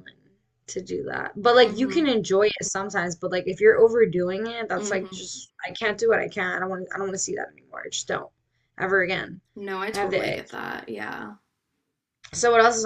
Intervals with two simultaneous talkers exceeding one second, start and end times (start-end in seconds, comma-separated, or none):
none